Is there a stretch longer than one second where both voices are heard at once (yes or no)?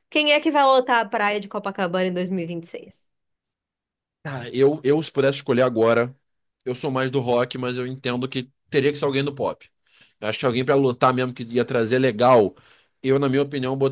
no